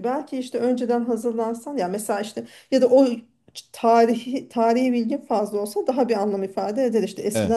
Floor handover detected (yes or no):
no